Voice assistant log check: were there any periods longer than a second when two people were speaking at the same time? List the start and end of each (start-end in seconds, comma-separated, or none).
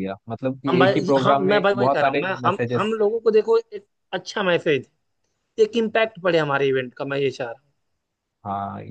0.7-3.0